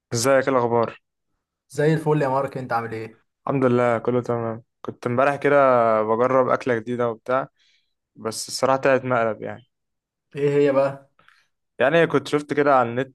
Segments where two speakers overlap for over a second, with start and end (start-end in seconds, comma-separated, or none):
none